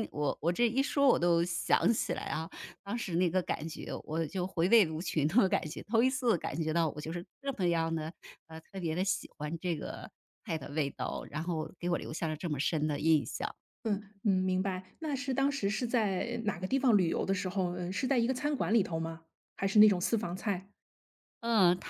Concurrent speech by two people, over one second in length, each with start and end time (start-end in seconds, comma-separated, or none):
none